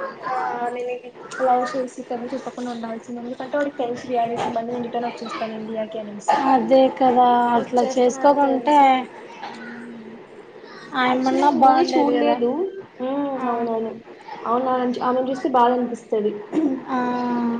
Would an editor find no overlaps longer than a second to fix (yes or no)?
no